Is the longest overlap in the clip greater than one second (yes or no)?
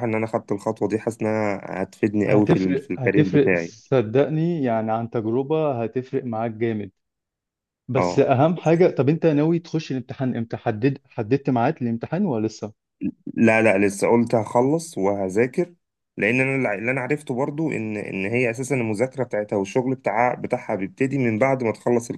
yes